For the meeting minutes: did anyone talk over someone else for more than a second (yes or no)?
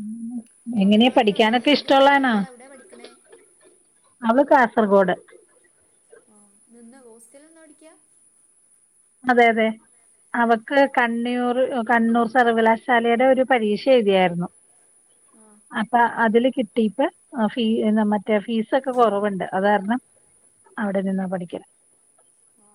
yes